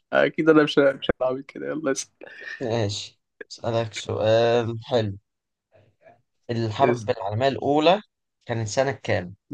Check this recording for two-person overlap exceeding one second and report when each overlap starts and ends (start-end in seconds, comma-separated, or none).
none